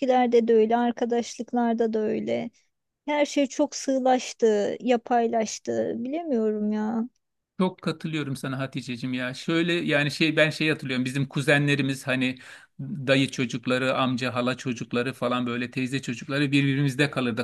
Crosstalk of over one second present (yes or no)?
no